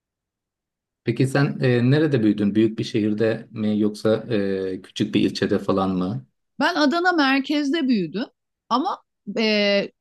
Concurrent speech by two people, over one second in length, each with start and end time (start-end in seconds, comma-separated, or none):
none